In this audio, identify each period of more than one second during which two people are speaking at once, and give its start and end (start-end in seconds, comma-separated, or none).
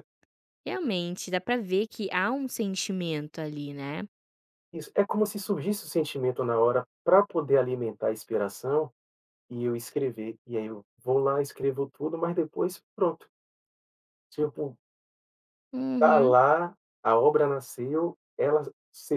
none